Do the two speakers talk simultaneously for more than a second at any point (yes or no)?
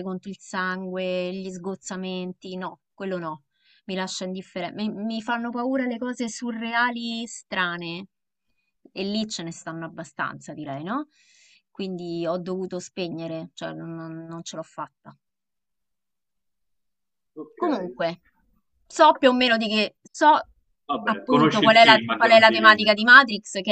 yes